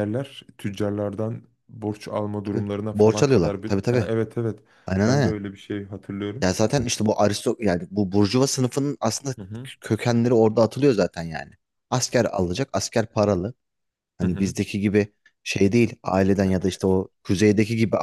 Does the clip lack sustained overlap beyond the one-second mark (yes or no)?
no